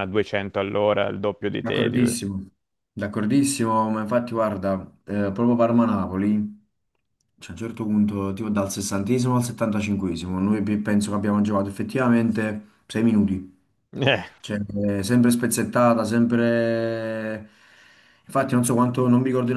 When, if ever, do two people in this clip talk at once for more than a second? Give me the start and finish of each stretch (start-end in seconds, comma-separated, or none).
none